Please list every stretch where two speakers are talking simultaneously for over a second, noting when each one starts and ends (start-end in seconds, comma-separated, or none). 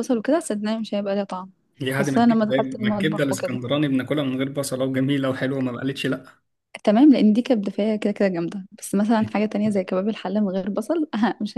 1.9-3.6